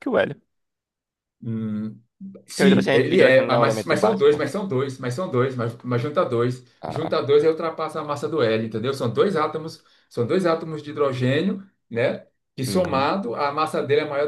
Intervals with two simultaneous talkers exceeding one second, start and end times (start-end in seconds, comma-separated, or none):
2.5-4.4